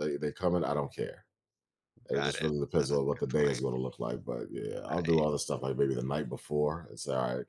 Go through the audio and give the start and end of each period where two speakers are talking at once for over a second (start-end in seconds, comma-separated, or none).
2.1-3.6